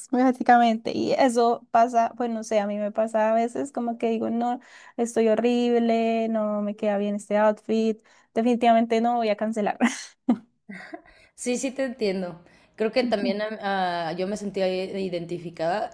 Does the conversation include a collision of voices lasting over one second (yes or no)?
no